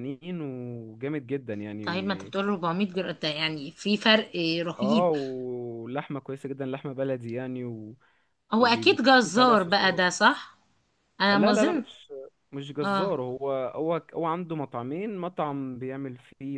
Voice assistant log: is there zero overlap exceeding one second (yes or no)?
no